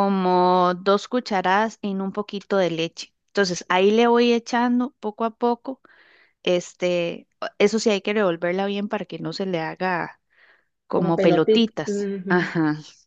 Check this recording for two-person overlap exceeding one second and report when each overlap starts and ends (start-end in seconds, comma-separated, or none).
10.9-12.5